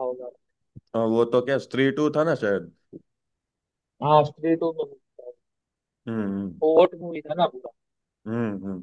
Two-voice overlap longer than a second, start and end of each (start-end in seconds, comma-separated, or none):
none